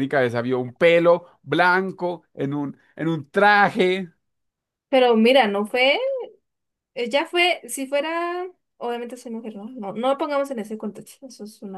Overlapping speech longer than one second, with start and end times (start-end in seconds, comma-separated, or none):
none